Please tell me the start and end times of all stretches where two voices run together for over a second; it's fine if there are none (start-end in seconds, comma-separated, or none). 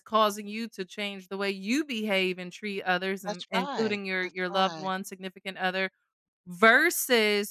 3.2-4.9